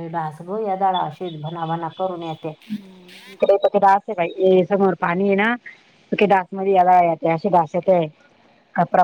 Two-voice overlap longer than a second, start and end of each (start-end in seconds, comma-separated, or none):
none